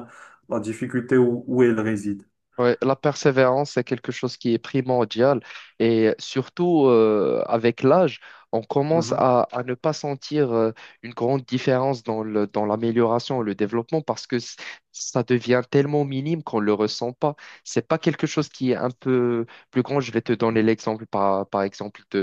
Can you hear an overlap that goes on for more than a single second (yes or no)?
no